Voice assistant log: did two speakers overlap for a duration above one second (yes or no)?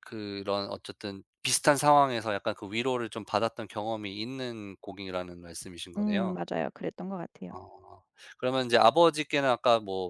no